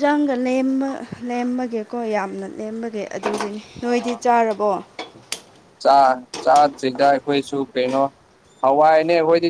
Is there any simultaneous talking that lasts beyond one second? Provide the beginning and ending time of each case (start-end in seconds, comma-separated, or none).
none